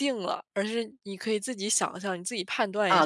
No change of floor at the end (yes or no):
no